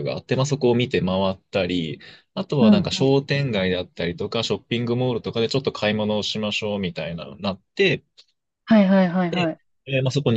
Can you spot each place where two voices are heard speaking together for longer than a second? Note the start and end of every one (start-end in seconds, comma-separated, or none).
none